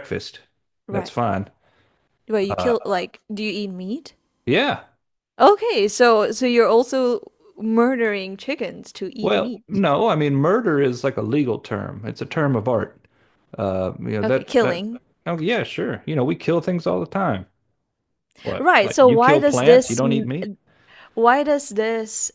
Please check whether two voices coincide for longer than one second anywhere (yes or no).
yes